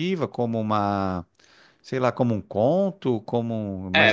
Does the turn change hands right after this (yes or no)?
yes